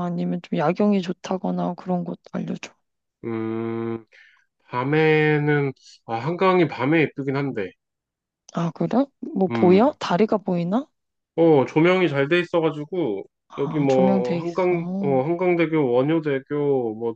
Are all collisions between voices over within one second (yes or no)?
no